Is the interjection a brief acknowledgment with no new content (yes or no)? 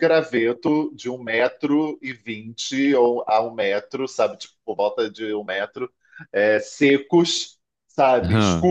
yes